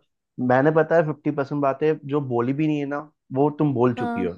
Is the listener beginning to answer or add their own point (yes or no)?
no